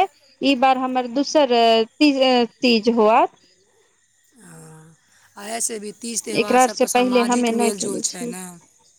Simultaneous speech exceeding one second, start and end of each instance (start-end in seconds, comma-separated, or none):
6.4-8.3